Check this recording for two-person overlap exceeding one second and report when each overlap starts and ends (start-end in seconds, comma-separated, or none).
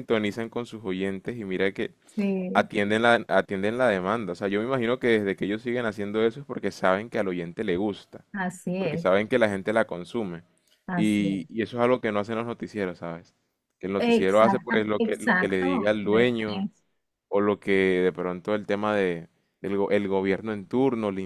14.0-16.7